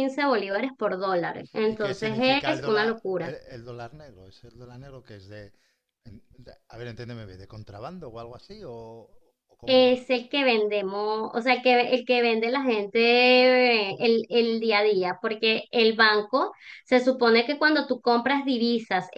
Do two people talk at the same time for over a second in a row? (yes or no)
yes